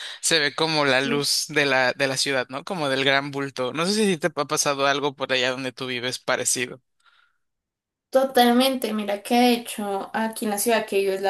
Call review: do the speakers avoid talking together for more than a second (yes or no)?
yes